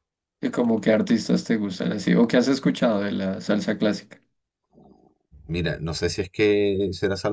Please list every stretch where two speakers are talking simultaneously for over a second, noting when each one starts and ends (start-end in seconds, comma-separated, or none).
none